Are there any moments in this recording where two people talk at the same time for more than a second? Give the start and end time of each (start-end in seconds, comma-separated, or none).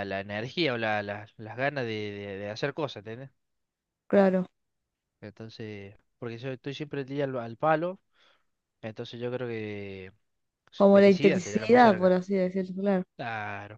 10.9-12.2